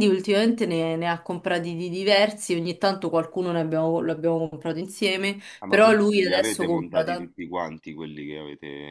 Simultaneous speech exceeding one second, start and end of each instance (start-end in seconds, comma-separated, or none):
5.6-7.4